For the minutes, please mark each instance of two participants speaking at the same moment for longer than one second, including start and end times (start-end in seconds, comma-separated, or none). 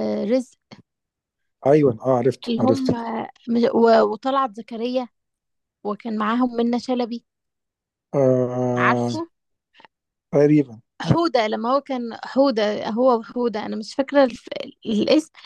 none